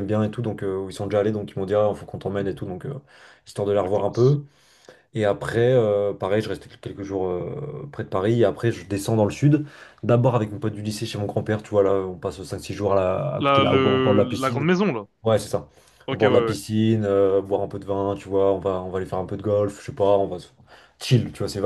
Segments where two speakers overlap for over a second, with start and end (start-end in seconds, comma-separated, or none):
13.4-14.7